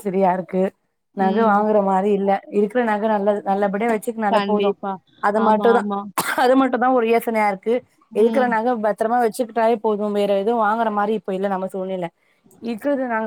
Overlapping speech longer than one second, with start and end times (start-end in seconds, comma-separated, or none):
none